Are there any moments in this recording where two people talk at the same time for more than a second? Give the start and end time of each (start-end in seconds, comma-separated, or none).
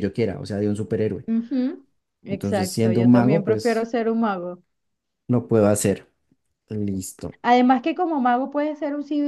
2.3-3.9